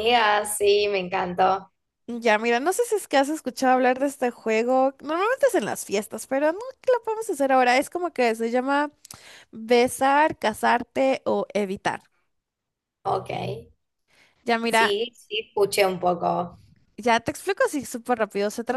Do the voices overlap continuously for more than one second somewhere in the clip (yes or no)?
no